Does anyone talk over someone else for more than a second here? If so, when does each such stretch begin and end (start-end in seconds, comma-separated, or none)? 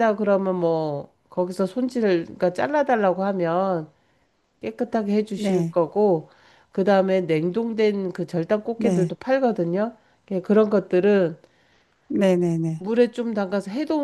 none